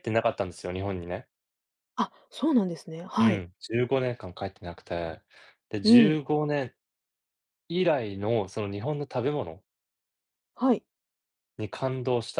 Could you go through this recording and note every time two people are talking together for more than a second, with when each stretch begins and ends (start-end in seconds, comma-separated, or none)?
none